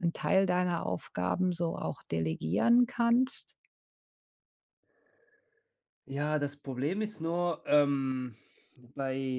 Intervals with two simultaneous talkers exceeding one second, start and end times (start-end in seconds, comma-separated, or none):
none